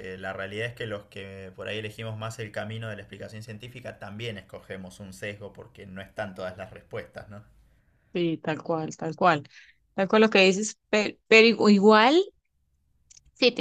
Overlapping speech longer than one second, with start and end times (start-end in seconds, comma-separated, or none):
none